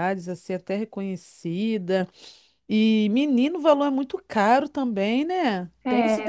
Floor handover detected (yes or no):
yes